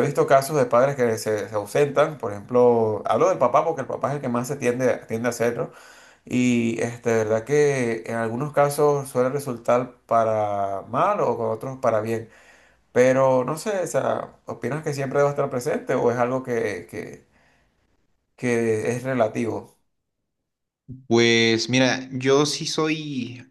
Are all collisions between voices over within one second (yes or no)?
yes